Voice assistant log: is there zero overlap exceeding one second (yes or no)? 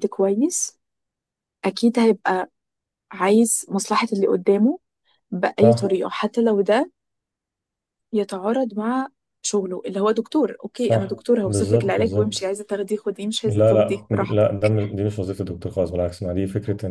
no